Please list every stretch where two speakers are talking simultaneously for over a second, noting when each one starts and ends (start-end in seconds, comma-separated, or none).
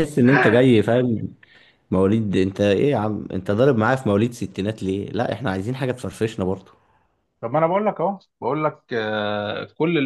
none